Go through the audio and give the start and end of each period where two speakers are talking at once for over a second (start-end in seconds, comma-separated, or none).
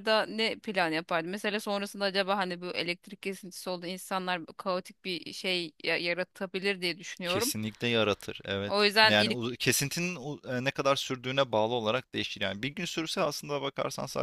none